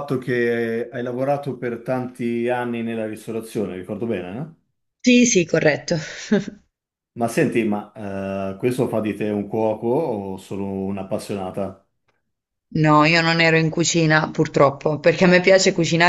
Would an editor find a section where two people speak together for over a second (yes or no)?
no